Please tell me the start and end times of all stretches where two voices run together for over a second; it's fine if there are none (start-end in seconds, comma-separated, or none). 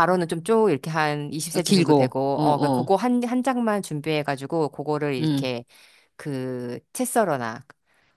1.5-2.9